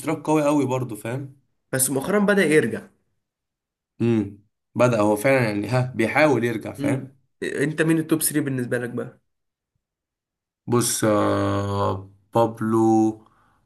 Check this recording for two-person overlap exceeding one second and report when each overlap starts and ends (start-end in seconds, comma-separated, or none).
none